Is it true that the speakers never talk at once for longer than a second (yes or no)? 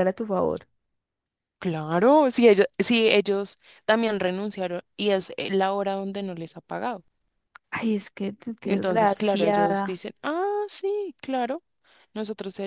no